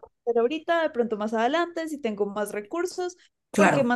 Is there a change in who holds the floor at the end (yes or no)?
no